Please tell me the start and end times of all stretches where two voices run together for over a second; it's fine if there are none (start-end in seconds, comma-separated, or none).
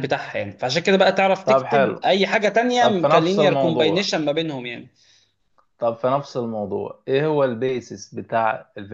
2.8-4.1